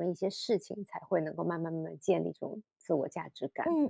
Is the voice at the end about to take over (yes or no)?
yes